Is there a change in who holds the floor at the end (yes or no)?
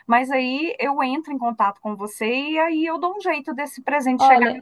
yes